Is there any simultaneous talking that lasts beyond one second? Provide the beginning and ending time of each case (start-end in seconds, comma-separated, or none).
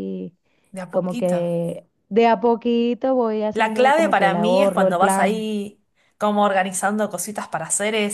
3.5-5.5